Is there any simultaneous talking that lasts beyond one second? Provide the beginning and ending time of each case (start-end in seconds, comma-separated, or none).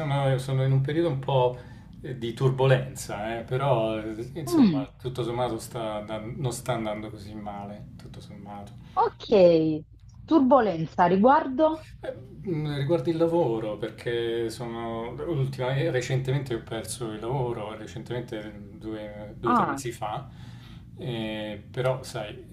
none